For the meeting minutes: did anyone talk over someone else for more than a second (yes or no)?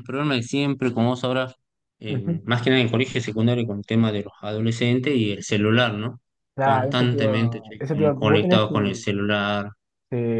yes